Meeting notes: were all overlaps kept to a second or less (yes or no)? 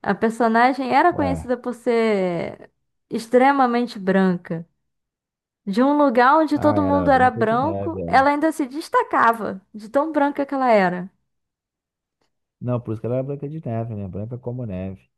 no